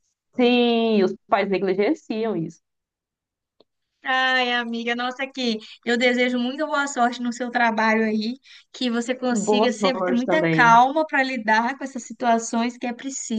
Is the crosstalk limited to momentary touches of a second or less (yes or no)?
no